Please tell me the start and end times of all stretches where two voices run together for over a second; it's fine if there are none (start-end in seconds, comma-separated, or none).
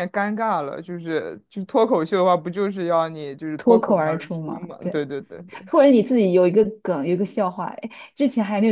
3.6-5.1